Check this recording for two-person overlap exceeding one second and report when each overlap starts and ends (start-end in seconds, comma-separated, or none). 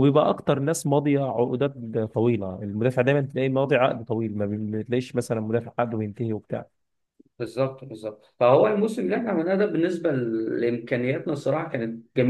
none